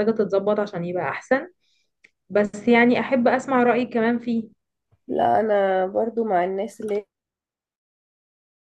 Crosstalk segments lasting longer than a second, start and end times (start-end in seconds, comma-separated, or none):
none